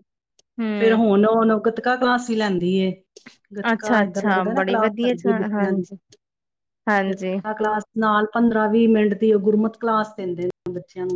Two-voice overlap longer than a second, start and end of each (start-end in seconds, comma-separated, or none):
3.7-5.1